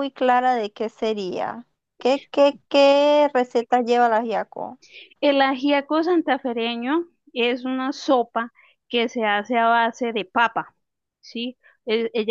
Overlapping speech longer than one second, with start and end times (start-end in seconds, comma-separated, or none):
none